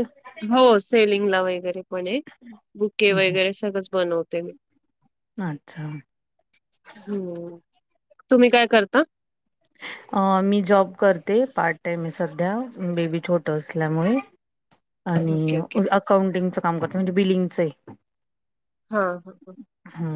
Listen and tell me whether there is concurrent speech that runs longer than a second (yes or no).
no